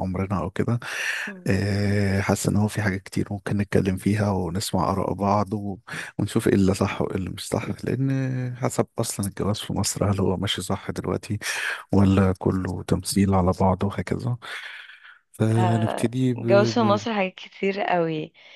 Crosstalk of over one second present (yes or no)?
yes